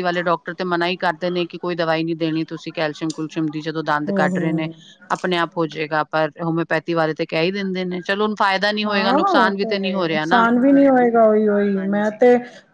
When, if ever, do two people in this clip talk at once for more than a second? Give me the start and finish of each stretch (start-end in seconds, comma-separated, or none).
8.8-10.4